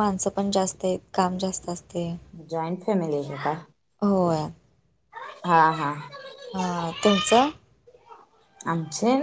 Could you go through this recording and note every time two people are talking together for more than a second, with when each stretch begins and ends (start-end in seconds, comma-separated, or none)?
none